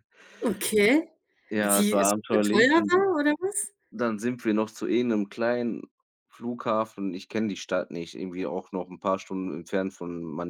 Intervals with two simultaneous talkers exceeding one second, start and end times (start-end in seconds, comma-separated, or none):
1.6-2.9